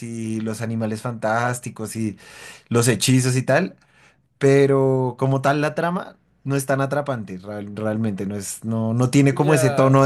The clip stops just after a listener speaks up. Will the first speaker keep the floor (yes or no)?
yes